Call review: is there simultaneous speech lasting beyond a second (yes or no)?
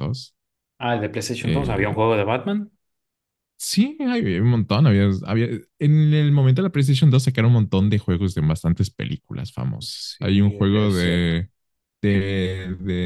yes